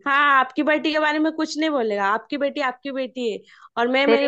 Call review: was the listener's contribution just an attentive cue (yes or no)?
no